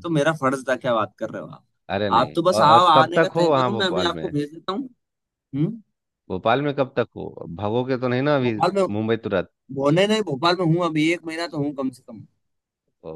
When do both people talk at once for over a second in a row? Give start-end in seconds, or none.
2.2-4.3